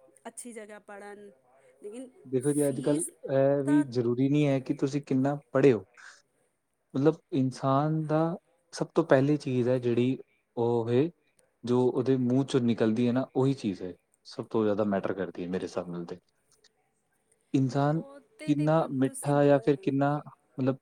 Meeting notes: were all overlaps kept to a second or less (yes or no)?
no